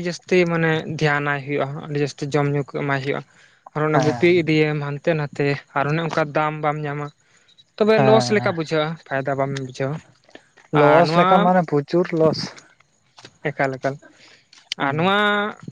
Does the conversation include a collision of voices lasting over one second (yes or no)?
no